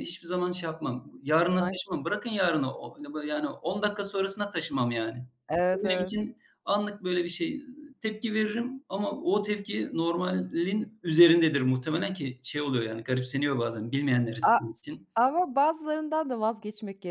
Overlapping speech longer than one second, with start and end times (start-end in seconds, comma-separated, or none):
none